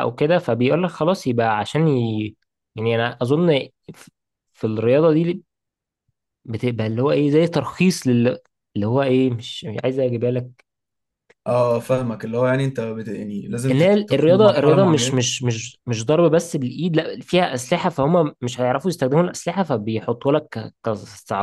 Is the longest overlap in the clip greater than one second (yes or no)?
yes